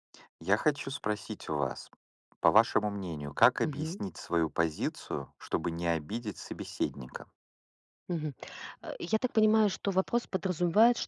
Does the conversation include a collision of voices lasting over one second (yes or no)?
no